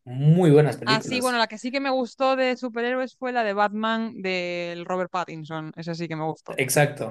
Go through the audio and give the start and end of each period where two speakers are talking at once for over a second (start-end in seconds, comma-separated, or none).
none